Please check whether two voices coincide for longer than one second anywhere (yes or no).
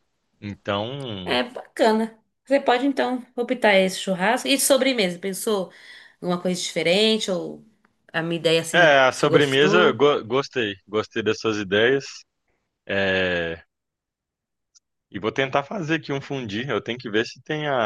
yes